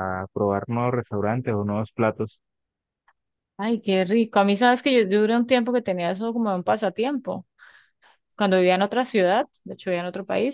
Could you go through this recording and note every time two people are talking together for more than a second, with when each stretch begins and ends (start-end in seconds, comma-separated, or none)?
none